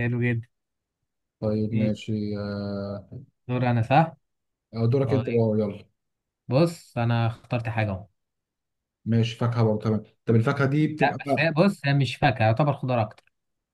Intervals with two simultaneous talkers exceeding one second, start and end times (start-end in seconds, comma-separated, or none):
none